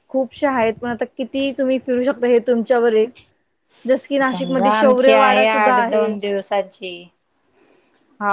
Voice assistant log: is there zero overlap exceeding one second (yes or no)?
no